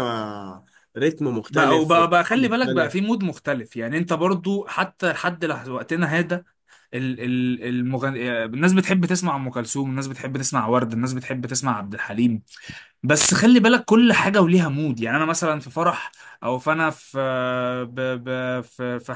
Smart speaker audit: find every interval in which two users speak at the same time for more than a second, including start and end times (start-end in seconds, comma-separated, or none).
1.5-3.0